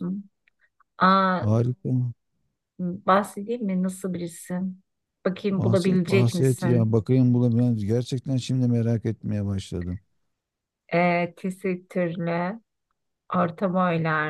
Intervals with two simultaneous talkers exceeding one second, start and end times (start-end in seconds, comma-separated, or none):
5.6-6.9